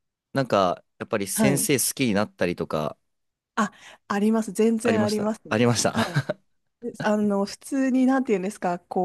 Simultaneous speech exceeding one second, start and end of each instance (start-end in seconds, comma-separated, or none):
4.8-6.2